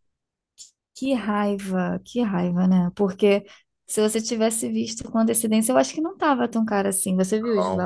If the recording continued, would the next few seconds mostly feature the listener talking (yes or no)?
yes